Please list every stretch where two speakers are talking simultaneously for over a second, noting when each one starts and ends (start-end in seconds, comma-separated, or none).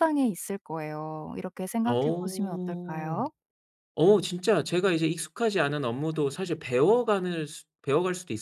1.9-3.2